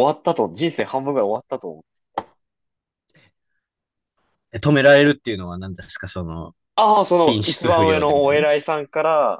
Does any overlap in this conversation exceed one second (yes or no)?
yes